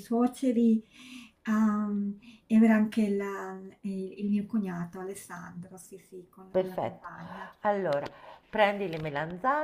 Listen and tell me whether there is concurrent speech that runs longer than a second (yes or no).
no